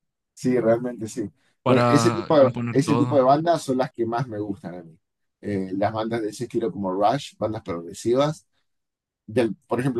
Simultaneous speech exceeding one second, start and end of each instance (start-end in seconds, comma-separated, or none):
1.6-3.2